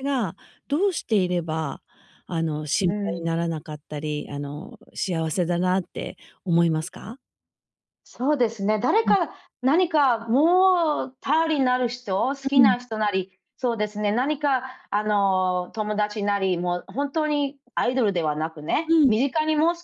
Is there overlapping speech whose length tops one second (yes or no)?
no